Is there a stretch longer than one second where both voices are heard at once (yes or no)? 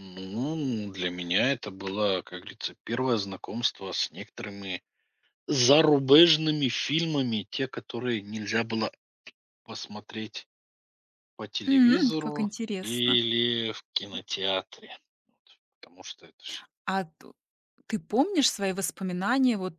yes